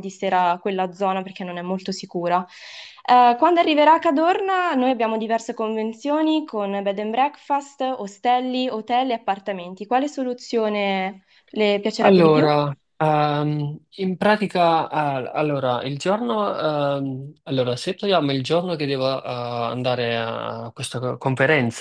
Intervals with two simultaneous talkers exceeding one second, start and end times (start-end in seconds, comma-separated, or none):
none